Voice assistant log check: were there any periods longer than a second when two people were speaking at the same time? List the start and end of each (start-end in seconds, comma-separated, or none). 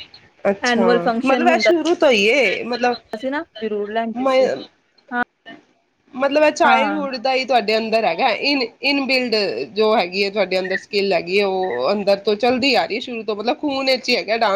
none